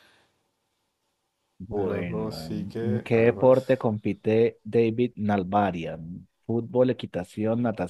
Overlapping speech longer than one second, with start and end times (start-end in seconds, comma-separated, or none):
1.8-3.9